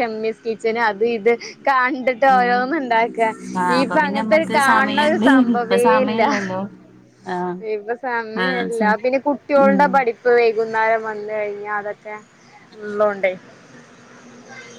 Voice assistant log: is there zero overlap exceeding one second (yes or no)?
no